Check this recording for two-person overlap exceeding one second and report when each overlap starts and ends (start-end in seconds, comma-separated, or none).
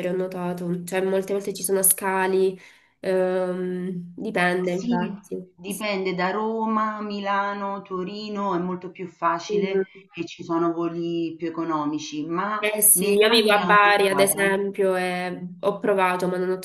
12.6-14.6